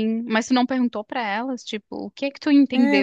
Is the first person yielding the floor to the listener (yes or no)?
yes